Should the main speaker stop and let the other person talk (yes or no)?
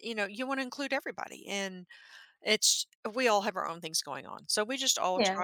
no